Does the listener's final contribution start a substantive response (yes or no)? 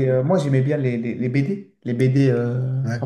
no